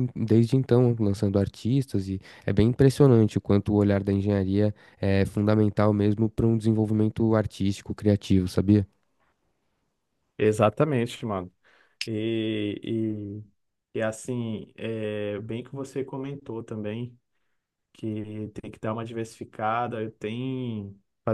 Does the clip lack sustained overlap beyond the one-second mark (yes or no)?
yes